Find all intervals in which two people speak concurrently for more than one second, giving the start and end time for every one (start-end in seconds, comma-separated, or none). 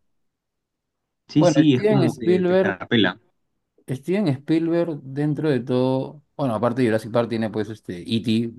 1.4-2.8